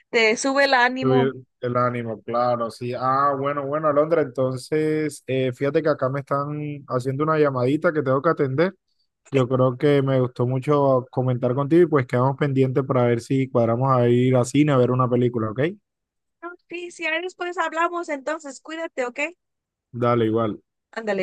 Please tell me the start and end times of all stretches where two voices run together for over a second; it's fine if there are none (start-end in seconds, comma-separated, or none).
none